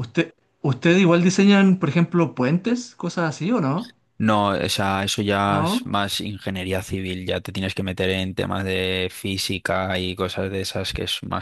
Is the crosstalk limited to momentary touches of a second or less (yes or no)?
yes